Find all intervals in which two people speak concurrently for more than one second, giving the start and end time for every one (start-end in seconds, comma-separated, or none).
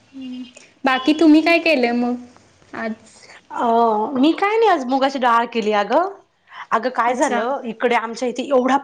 none